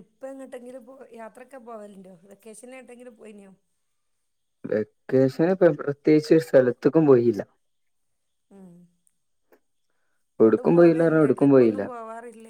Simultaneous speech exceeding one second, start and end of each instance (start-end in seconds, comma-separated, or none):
10.4-11.8